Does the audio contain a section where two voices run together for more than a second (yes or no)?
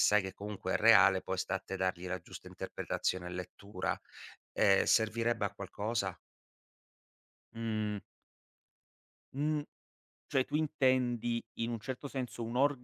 no